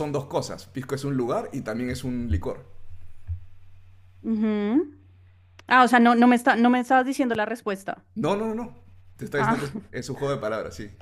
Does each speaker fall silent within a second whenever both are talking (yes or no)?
yes